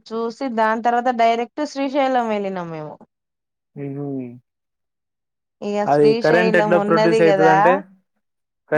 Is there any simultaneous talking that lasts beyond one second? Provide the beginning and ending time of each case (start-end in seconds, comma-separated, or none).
5.9-7.5